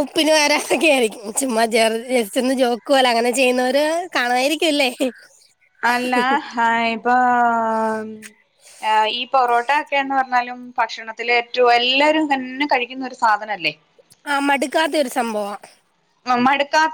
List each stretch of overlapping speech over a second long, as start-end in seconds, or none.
none